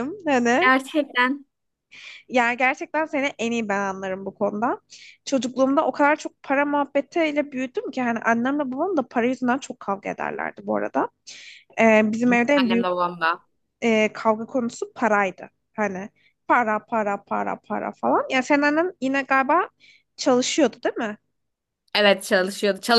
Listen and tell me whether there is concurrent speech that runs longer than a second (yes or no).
no